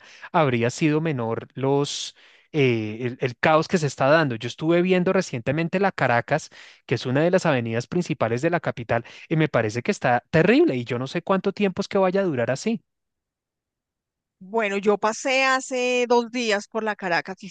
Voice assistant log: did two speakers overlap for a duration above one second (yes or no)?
no